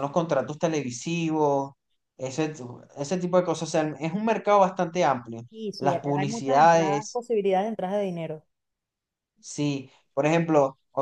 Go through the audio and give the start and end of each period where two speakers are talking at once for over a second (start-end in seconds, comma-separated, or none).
5.8-7.2